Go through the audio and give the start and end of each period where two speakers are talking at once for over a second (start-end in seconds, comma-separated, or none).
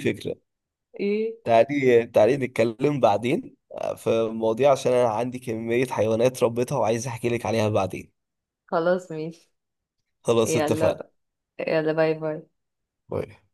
none